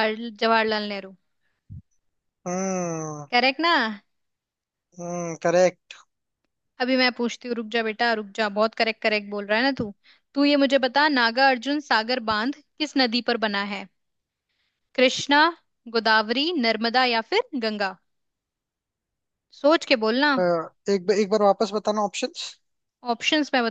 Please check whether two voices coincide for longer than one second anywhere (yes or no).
no